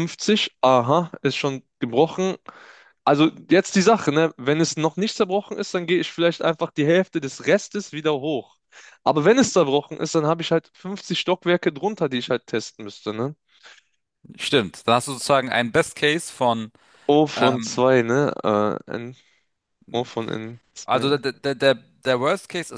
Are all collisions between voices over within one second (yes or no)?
yes